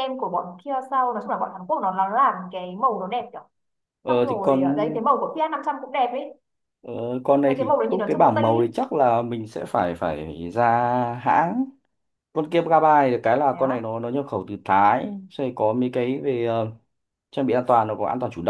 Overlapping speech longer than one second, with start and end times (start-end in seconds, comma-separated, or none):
7.4-8.8